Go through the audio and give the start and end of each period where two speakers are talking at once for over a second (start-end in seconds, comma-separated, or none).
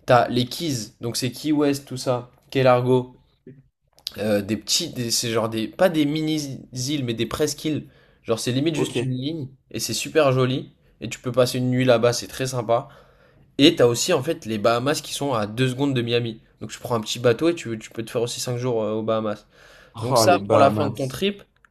20.0-21.2